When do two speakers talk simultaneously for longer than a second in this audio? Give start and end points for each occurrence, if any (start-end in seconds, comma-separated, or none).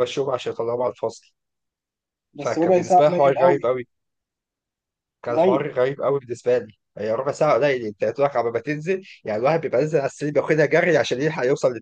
2.4-3.6